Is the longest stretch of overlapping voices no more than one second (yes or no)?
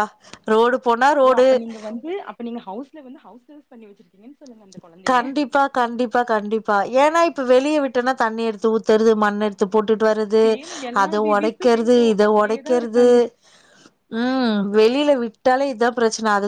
no